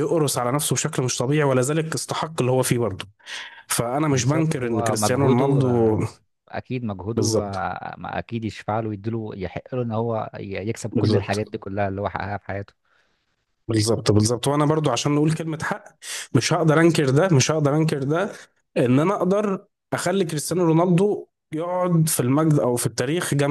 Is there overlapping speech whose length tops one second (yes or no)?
yes